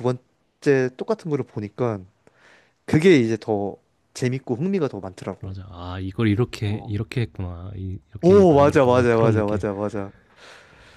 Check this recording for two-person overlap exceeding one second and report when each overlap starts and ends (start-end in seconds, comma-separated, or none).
8.2-9.6